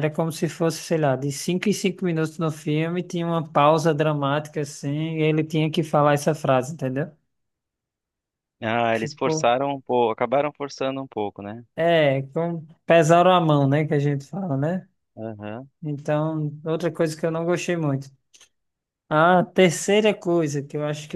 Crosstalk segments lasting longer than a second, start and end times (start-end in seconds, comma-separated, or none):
none